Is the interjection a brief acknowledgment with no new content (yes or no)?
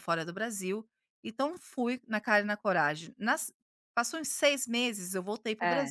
yes